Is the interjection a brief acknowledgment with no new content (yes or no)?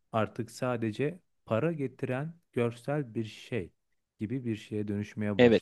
yes